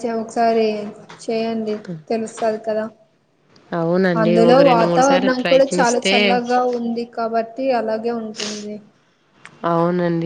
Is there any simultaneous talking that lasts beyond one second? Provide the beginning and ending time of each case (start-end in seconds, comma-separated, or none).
4.2-6.2